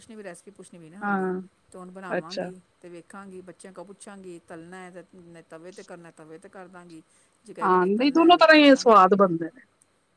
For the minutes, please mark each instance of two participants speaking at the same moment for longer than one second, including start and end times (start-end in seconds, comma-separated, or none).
7.6-9.3